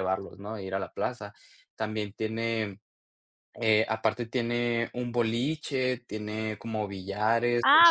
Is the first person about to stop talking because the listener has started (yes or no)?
yes